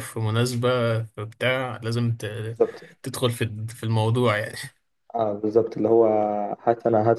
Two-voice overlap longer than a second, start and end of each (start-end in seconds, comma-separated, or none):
none